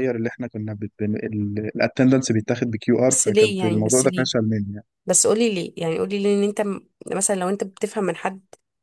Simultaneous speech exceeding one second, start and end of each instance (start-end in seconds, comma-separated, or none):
3.1-4.3